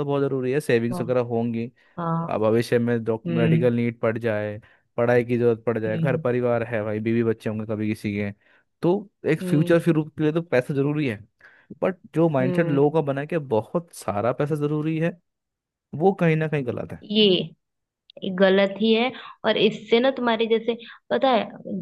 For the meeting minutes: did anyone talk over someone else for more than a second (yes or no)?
no